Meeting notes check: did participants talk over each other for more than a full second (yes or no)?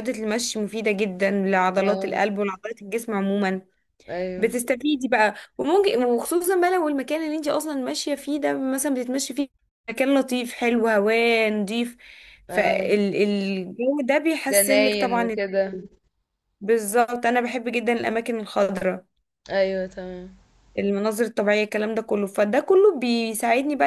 yes